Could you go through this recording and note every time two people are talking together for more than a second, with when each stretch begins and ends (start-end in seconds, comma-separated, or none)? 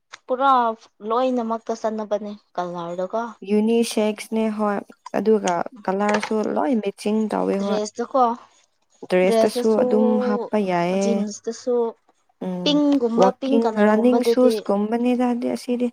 none